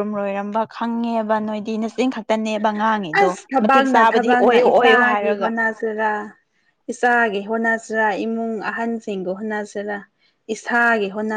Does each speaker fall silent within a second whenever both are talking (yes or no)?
no